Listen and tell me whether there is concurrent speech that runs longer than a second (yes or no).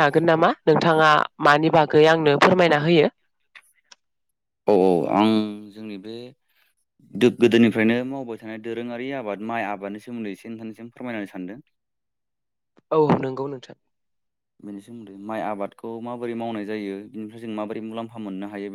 no